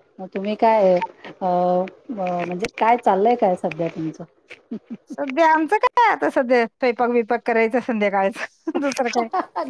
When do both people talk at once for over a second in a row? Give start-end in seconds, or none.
none